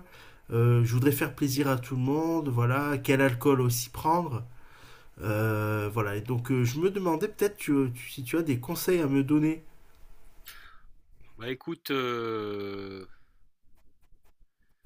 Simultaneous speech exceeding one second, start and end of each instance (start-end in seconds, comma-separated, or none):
none